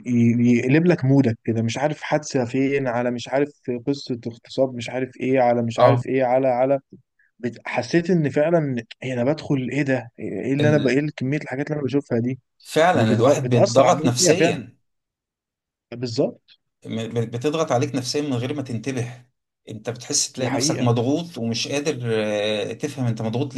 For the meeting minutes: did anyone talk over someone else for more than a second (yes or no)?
yes